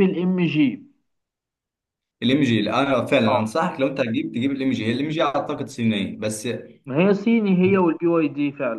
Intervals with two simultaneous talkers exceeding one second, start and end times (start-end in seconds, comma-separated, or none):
none